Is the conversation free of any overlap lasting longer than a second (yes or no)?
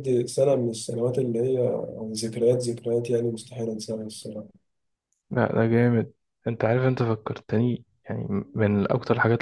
yes